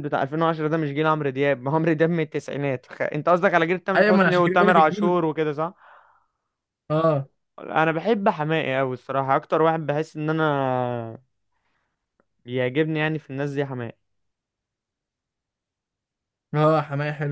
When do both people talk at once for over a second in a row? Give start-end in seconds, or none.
4.0-5.2